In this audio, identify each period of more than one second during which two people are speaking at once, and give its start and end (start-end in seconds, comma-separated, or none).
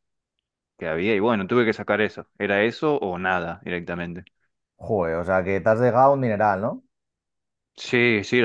none